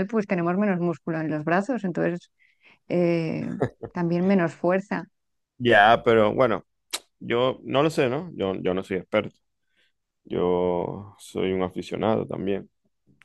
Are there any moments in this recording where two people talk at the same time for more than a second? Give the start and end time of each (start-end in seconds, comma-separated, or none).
none